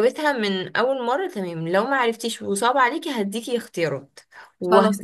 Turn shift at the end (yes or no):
no